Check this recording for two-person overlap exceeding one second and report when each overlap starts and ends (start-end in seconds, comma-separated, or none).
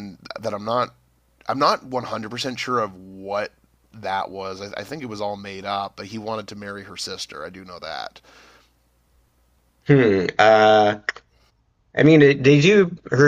none